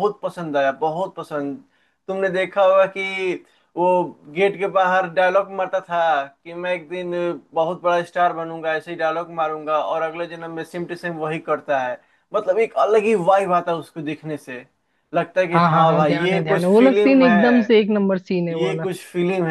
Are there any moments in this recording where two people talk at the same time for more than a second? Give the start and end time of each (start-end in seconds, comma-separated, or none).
15.5-17.8